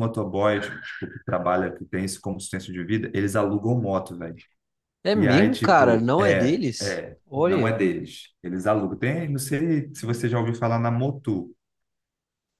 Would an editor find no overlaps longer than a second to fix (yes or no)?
no